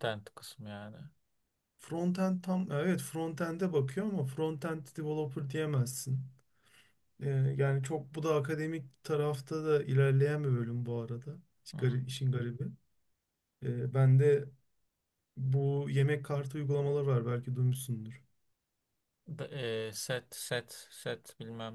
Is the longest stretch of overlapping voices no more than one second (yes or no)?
yes